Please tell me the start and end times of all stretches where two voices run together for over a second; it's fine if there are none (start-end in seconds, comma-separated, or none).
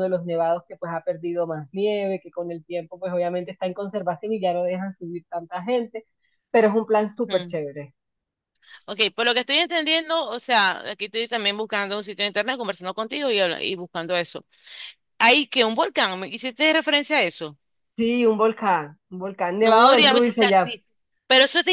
19.6-20.8